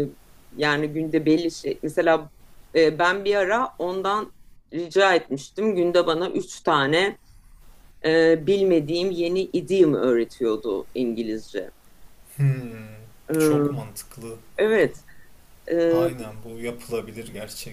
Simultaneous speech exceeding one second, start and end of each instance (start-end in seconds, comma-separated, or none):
none